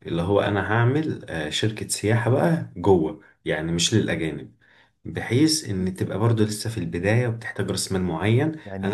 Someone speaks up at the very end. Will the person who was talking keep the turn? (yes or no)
yes